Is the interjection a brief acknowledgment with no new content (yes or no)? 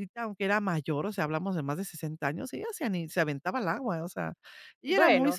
yes